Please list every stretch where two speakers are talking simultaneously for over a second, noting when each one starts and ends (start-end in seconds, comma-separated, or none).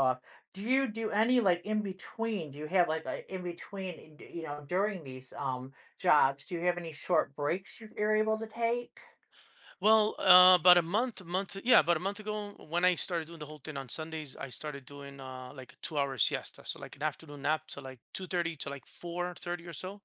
none